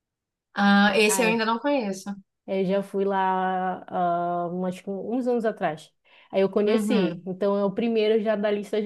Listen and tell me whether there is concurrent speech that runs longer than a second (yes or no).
no